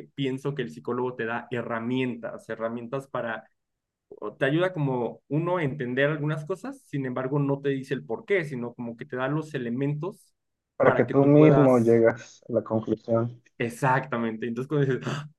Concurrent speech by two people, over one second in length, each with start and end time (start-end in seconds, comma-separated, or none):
10.8-12.0